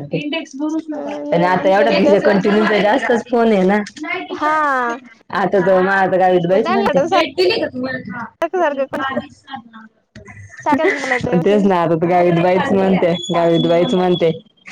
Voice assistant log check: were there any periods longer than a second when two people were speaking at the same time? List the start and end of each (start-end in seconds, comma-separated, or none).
0.9-2.2